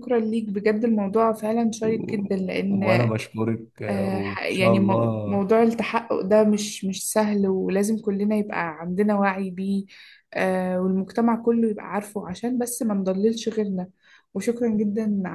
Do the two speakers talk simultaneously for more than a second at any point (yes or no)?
yes